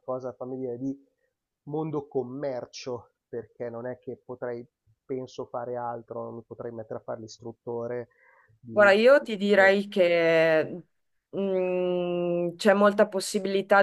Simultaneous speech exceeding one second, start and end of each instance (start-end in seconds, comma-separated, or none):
none